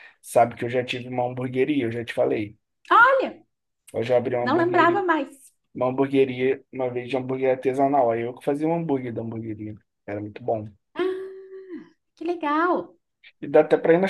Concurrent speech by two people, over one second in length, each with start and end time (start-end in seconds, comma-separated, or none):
none